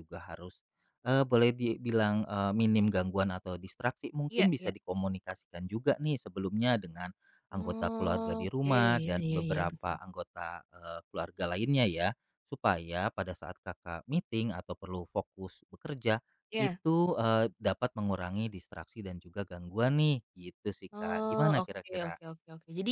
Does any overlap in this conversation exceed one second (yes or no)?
yes